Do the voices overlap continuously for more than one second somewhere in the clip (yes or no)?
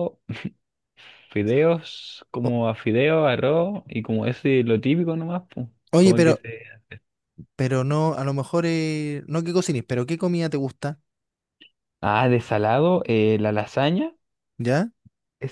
no